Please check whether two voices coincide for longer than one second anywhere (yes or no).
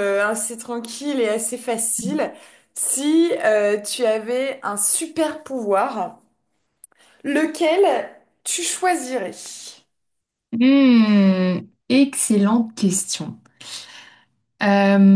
no